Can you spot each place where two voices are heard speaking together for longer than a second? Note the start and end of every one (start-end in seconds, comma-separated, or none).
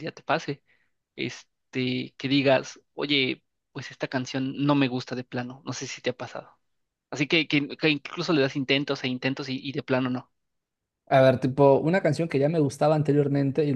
none